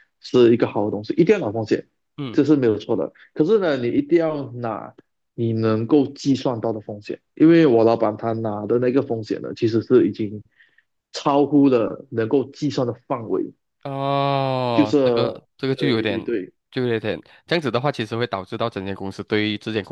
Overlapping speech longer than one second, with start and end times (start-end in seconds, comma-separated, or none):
14.7-16.2